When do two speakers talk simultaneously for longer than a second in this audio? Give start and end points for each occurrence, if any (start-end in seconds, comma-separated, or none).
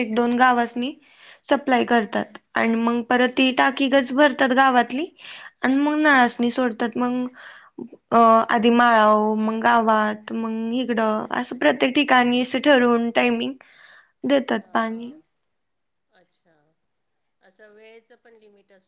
none